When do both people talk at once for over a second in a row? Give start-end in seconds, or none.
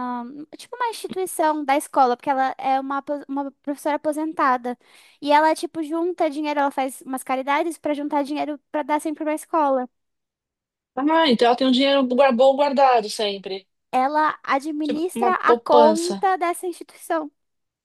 14.8-16.3